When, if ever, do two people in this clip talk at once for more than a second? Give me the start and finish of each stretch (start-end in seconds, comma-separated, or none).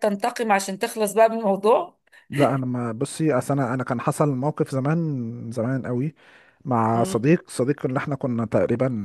none